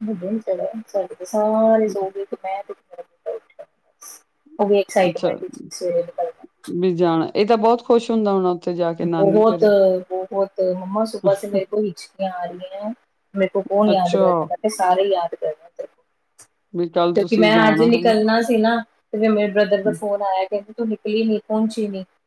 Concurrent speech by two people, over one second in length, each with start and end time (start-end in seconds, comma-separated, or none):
16.8-18.3